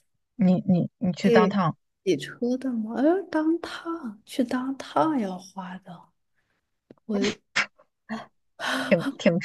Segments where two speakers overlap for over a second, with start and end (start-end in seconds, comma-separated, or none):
none